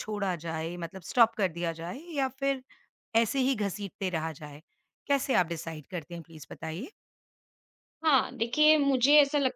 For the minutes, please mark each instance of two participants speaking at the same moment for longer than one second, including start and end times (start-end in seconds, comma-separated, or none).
none